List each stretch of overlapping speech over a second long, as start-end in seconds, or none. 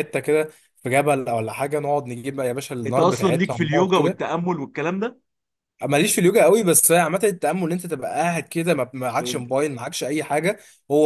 2.9-4.2